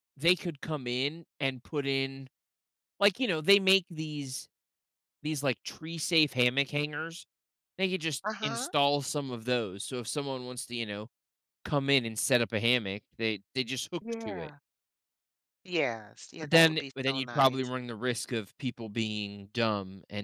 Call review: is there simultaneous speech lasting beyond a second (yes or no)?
yes